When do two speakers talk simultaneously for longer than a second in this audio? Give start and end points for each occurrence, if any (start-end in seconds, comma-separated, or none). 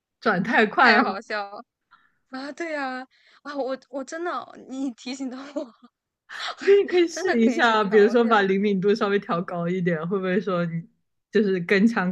7.1-8.4